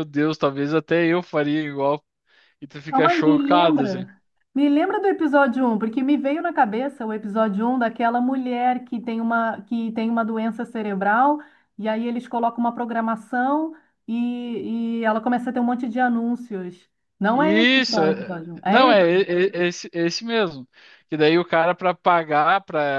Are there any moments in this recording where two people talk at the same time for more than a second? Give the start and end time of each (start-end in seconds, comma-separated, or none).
2.9-4.1, 17.3-18.9